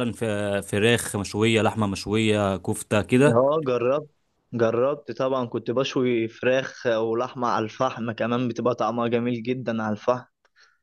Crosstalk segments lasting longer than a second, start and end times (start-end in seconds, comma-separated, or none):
none